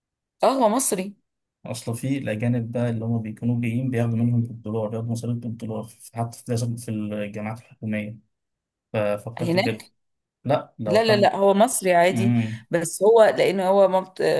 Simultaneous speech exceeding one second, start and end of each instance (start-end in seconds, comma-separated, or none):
none